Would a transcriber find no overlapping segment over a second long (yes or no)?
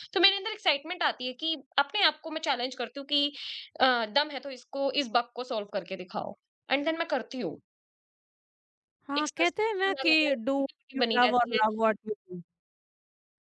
no